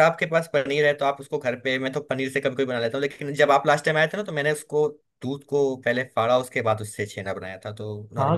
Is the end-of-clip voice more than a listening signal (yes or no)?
yes